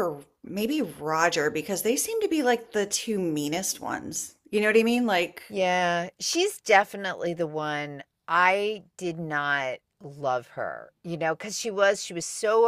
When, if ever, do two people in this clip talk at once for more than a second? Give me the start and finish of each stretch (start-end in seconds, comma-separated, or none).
none